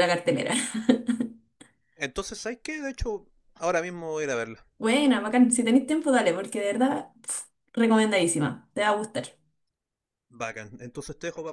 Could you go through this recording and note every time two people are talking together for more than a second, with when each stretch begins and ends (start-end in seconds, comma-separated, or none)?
none